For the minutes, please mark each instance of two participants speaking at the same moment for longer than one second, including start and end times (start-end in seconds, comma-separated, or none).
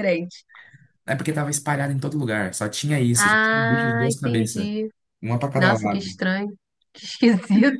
3.1-4.7